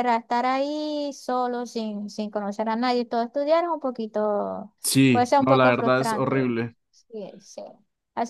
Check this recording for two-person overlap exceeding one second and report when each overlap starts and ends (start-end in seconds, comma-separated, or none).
5.1-6.5